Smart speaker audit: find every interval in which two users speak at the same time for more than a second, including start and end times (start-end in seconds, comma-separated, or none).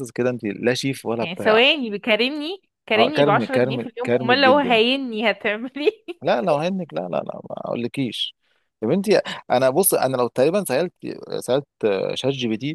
3.0-4.8